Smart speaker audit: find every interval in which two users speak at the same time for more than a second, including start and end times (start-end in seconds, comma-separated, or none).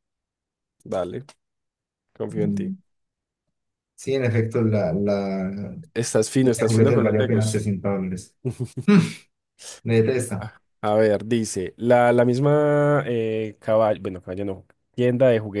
6.4-7.7